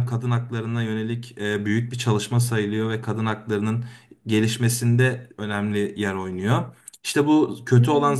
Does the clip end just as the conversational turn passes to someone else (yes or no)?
no